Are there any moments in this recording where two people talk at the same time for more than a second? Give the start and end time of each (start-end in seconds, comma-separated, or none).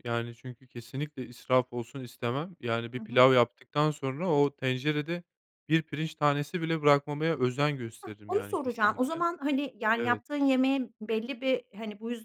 8.0-9.2